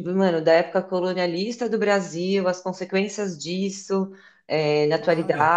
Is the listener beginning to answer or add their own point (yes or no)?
no